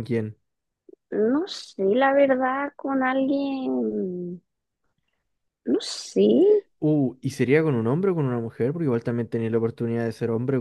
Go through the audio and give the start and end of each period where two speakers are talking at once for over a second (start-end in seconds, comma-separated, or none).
none